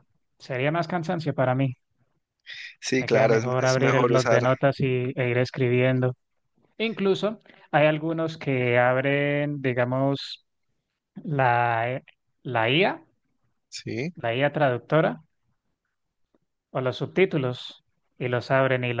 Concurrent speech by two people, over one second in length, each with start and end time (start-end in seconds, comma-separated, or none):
3.0-4.4